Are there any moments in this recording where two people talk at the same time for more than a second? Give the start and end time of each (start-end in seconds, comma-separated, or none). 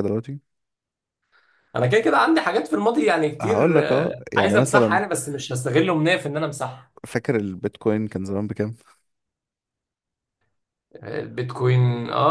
3.4-5.0